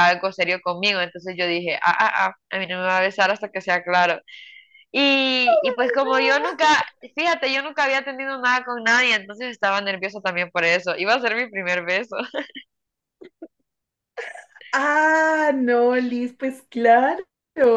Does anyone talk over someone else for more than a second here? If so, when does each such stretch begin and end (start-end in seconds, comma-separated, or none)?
none